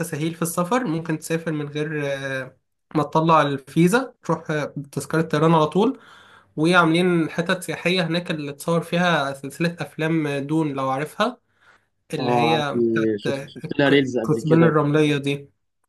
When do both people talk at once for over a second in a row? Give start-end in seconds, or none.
12.2-15.1